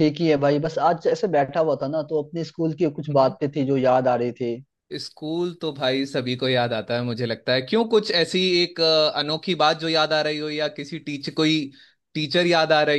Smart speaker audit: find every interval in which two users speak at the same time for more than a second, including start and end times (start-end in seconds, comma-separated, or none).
none